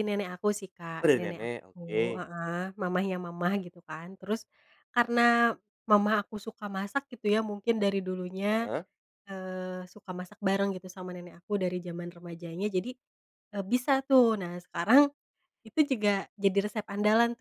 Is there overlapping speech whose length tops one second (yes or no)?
yes